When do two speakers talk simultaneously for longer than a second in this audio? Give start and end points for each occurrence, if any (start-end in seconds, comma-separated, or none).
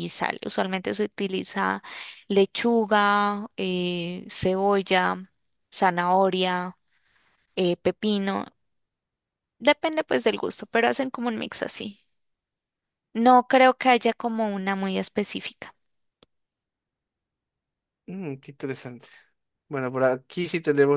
none